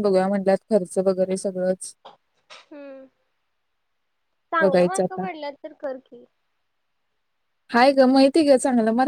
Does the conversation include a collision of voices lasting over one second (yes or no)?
no